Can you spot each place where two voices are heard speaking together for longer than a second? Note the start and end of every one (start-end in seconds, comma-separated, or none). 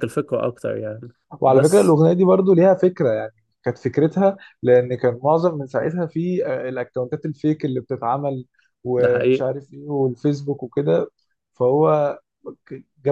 none